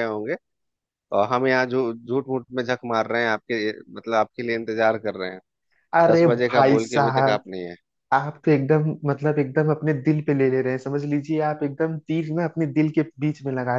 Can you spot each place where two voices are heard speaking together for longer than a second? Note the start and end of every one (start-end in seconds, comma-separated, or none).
6.1-7.4